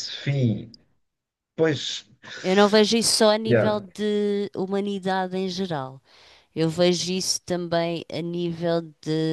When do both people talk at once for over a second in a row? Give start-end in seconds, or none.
none